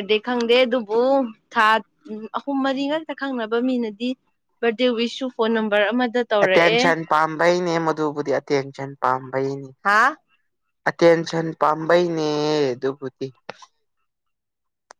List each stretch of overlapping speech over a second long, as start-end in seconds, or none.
none